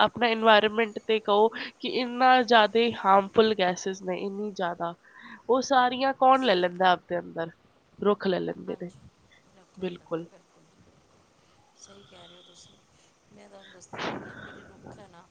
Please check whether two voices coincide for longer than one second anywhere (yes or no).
no